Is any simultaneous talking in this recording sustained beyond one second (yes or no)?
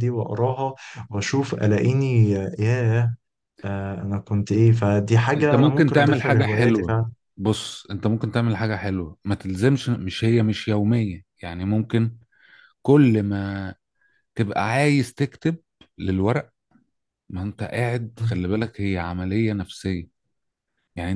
yes